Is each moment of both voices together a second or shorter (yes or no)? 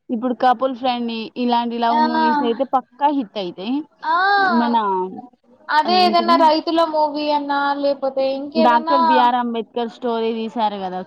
yes